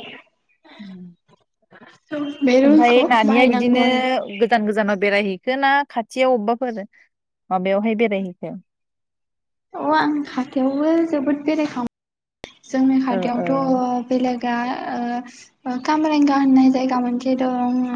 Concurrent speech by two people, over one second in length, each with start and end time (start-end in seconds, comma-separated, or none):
2.7-4.2